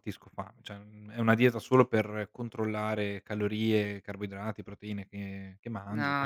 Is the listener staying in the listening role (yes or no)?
no